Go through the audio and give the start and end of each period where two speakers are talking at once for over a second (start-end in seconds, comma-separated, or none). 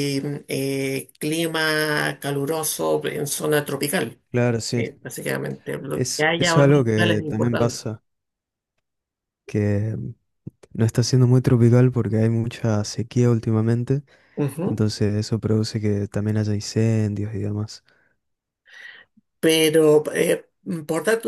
5.9-7.8